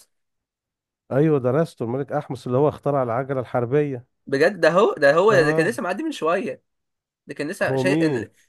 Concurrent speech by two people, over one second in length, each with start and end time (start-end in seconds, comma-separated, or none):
none